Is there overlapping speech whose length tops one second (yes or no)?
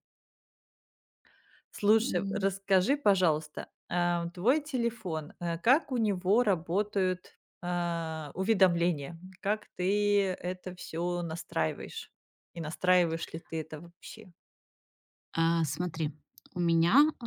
no